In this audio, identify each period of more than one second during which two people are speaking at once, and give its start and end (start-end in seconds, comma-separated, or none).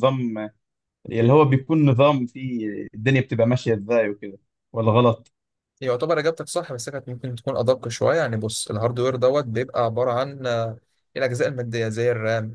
none